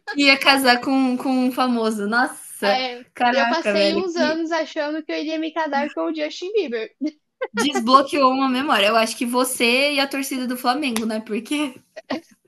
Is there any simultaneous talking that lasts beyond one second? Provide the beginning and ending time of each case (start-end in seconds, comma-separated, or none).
2.6-4.4